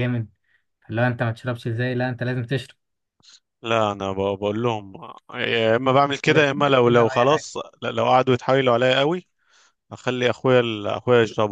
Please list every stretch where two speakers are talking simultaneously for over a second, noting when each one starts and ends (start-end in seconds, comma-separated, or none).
6.3-7.5